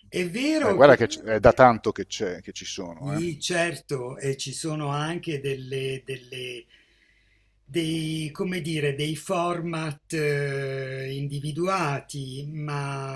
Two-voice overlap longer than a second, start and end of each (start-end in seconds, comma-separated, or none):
none